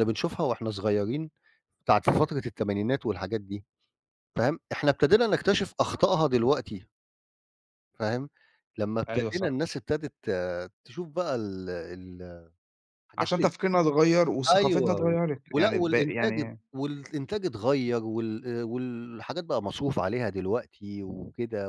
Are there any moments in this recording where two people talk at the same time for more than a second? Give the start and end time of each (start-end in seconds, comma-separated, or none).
14.5-16.6